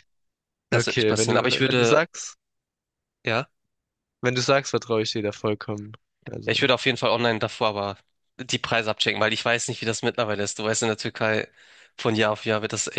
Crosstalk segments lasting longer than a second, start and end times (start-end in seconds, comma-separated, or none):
0.7-2.0